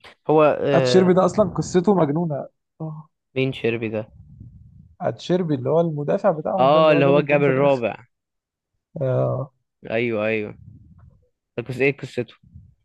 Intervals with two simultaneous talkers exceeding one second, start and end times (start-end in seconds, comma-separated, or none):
6.6-7.8